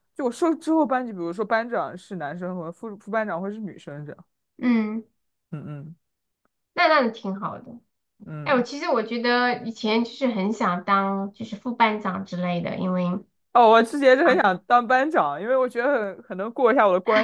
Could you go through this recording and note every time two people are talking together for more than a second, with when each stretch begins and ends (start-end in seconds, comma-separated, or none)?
none